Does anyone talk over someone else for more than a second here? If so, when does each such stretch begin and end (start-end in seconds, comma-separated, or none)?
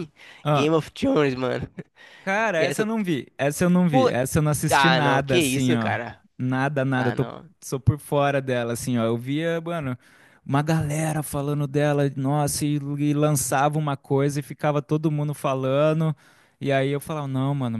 4.7-5.9